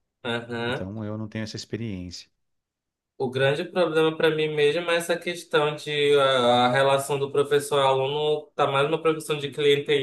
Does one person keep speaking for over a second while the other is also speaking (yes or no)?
no